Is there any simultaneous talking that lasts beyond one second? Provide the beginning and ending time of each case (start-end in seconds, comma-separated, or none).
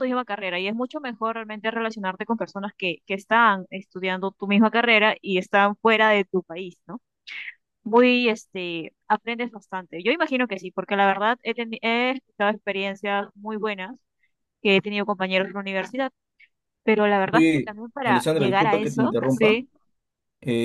17.3-19.6